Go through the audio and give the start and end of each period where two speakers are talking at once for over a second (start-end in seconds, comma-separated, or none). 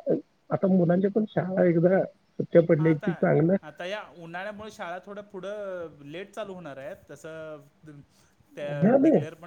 none